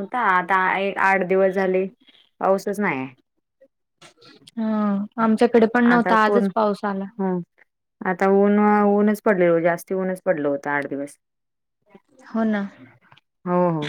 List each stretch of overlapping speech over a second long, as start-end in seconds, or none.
none